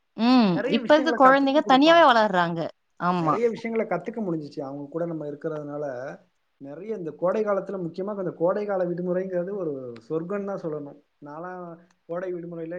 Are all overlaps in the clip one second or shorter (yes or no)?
no